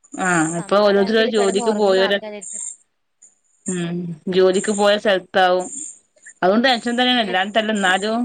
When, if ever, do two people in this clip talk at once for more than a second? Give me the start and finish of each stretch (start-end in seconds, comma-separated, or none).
0.6-2.2